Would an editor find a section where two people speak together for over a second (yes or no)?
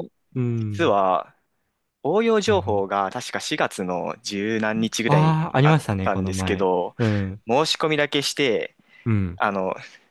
yes